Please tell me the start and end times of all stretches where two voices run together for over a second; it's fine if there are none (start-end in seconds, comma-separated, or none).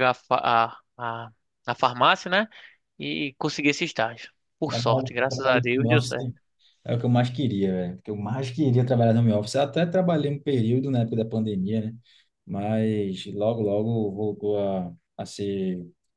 4.6-6.3